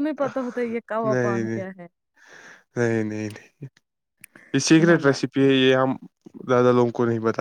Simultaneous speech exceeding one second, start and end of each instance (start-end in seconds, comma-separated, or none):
none